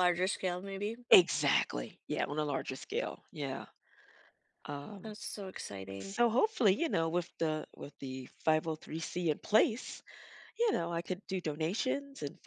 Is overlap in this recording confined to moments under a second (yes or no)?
yes